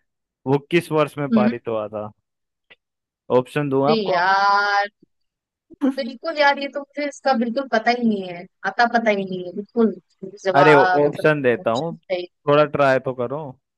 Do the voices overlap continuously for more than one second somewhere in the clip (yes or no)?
yes